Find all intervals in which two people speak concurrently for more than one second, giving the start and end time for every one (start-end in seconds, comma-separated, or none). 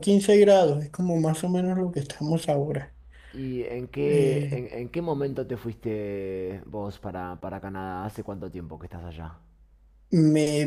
none